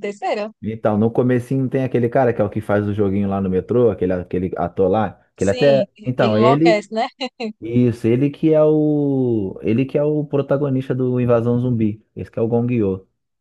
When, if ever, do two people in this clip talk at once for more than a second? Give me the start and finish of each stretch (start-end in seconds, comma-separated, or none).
5.4-6.8